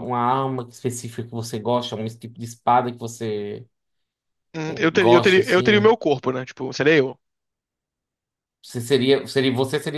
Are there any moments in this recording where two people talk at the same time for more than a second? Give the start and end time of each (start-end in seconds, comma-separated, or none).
4.7-6.0